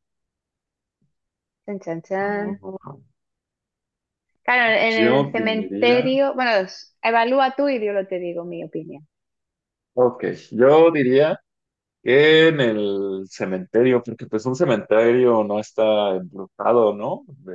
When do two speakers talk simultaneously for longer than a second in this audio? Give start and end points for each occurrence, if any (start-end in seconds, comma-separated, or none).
4.9-6.1